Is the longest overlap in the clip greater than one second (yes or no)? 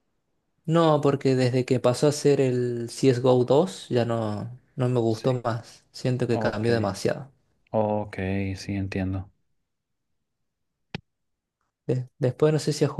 no